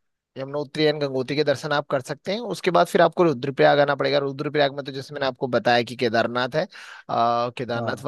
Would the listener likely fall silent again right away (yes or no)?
yes